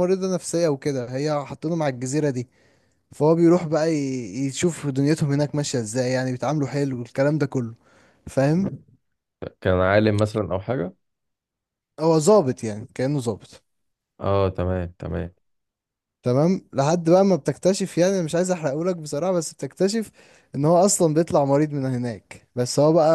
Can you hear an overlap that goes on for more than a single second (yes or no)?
no